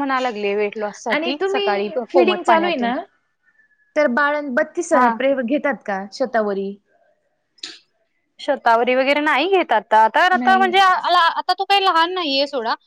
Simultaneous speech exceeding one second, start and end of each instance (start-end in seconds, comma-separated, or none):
1.1-2.9